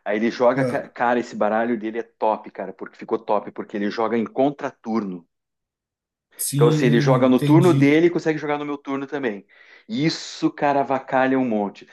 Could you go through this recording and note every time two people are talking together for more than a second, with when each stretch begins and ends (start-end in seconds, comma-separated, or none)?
6.5-7.9